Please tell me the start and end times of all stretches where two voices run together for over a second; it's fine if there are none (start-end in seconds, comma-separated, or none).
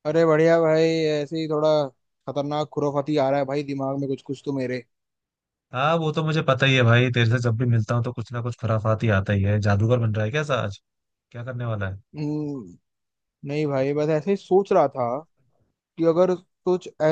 none